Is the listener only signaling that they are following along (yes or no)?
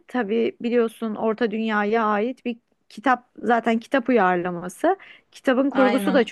yes